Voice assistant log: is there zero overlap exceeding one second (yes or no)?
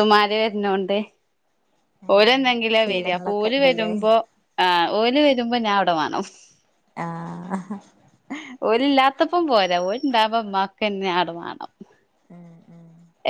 no